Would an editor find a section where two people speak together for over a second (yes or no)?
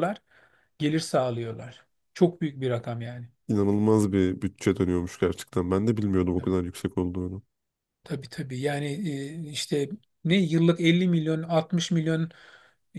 no